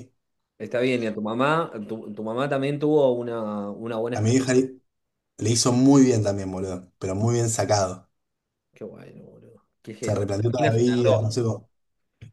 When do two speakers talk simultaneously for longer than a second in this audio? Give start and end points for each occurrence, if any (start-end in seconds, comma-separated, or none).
10.0-11.7